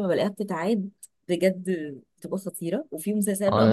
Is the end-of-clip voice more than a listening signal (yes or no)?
yes